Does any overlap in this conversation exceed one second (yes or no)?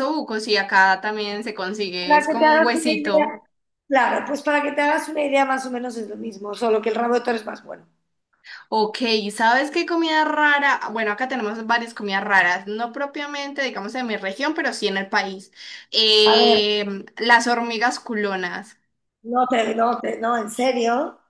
yes